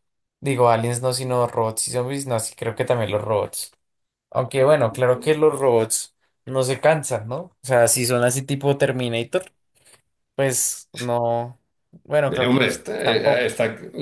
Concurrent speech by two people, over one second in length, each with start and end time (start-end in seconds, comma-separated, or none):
12.3-13.5